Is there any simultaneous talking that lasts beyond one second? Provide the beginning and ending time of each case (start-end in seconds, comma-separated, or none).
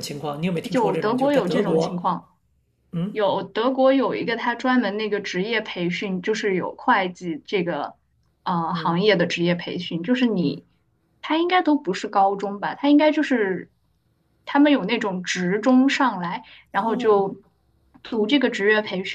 0.7-2.0